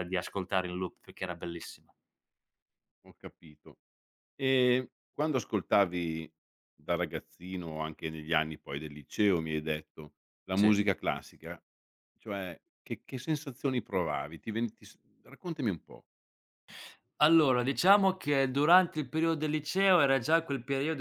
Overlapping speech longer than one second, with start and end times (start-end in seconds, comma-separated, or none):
none